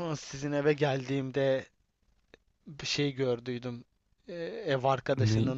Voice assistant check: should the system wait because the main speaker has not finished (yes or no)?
yes